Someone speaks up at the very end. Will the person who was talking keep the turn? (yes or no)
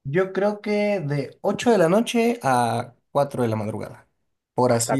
no